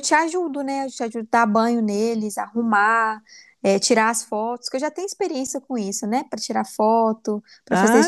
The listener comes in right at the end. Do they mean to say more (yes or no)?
yes